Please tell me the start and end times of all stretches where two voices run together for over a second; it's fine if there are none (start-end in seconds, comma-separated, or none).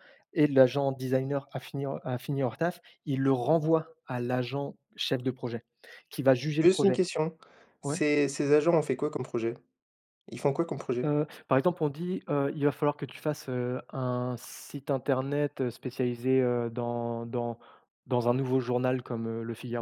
none